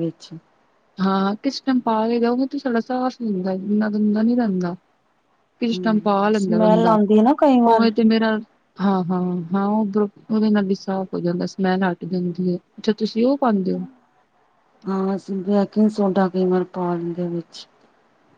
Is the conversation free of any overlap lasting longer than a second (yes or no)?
no